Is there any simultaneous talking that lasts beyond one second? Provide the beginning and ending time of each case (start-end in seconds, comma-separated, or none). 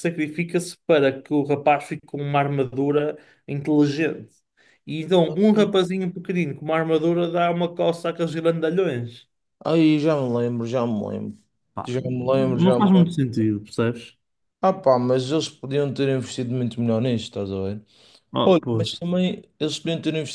11.8-13.2